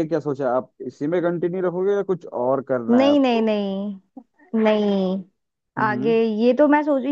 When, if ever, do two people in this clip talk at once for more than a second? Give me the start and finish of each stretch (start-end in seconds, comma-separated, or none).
none